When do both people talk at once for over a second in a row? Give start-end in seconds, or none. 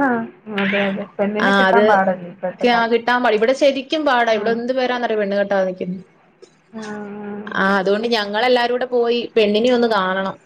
1.5-3.1